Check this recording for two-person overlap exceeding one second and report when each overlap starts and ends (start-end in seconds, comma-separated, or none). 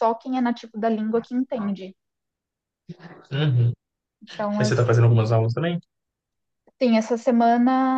none